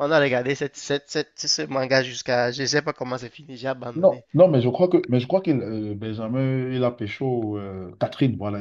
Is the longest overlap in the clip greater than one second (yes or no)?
no